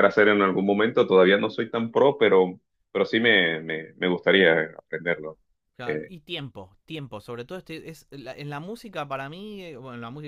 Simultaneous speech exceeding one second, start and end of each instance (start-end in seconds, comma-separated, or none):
none